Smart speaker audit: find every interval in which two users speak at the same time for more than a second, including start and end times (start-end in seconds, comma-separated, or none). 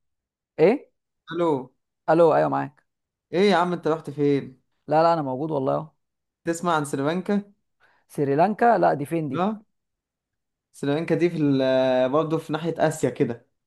none